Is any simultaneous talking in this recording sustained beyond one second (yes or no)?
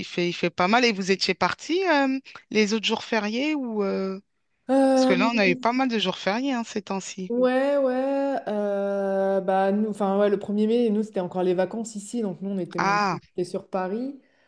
no